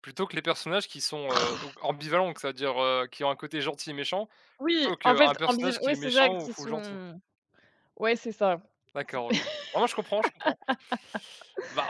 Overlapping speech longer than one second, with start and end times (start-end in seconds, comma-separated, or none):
4.7-7.0